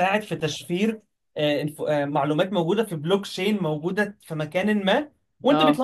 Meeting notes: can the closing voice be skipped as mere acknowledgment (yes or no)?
yes